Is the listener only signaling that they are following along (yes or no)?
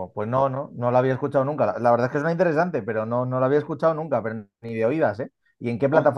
no